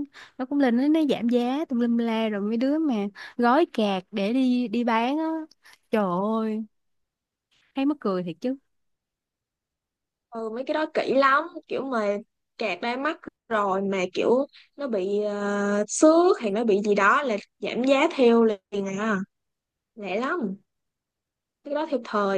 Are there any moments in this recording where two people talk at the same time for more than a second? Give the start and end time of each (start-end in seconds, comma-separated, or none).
none